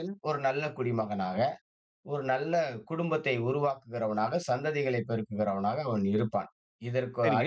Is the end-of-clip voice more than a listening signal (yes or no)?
yes